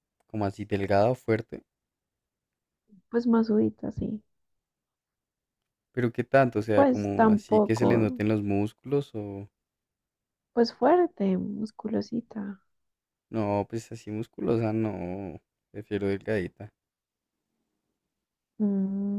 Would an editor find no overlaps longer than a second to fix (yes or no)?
no